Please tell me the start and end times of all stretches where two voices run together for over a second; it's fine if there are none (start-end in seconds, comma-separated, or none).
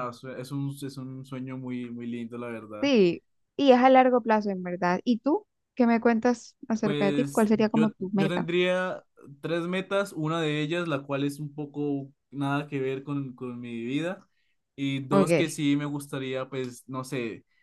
6.8-8.5